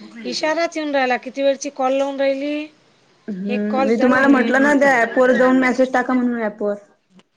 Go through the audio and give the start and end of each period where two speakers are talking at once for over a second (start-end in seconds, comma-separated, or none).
3.5-5.6